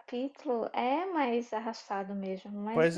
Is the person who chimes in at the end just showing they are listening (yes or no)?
no